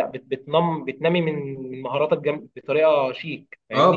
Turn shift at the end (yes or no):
yes